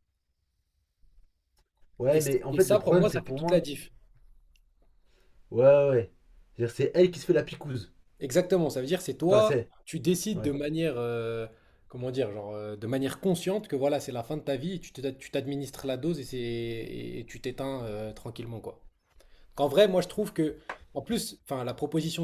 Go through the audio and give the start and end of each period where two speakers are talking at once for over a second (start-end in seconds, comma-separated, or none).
2.1-3.6